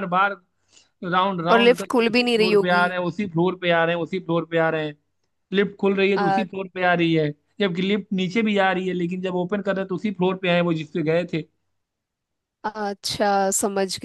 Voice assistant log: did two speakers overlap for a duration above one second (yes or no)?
yes